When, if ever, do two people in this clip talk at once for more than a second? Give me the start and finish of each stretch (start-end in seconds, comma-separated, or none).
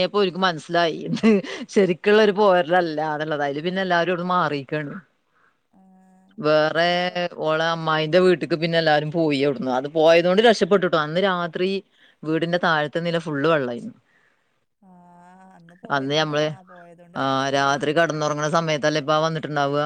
none